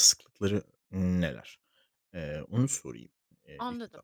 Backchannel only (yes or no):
no